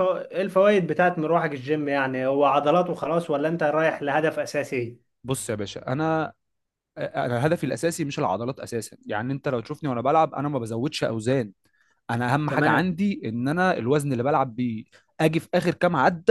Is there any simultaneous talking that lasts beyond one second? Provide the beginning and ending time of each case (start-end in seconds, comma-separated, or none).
none